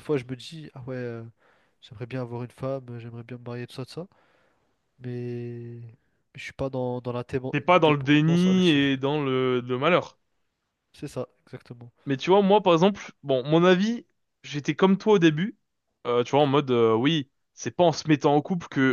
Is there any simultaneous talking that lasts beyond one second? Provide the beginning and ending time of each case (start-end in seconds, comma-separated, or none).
7.5-8.8